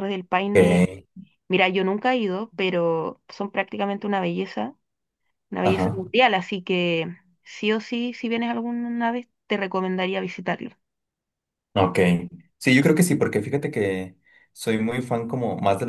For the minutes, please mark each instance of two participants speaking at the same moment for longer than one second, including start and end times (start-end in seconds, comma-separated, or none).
none